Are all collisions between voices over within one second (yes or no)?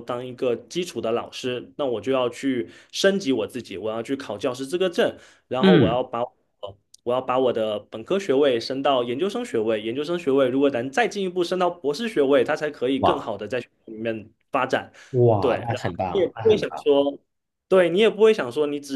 no